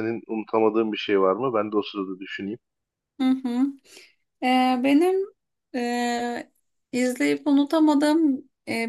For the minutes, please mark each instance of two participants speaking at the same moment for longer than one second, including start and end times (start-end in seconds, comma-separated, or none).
none